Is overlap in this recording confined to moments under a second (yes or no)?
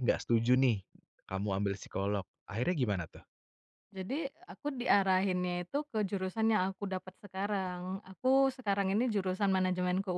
yes